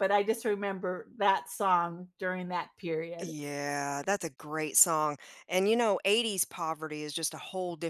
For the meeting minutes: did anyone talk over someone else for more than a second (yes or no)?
no